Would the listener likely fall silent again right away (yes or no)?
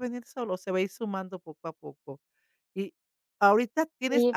yes